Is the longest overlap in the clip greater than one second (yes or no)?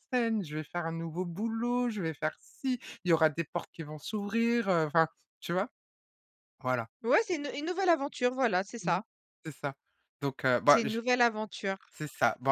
no